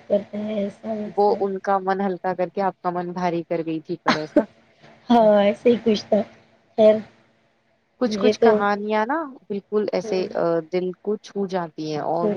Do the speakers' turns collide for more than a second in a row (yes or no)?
no